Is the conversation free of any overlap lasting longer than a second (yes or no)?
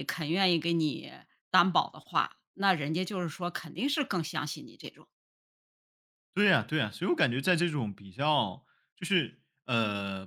yes